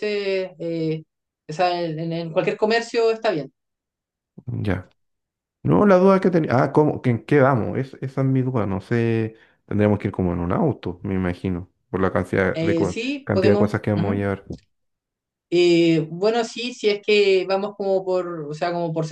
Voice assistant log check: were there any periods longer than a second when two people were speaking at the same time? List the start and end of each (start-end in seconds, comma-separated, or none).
12.5-14.3